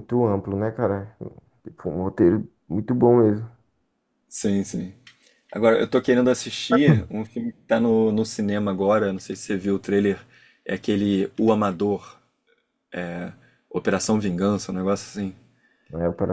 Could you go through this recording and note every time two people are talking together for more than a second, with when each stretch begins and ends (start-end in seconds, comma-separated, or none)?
none